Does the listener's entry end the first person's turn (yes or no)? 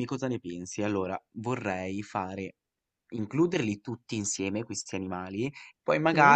no